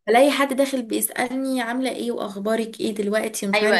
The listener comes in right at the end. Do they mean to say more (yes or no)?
yes